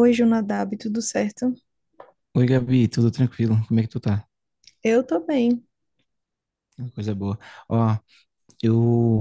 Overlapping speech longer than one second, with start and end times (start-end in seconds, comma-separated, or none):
none